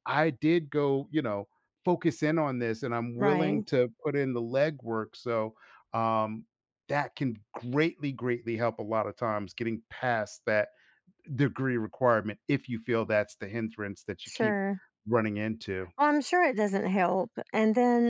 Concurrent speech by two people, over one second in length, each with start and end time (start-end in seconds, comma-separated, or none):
none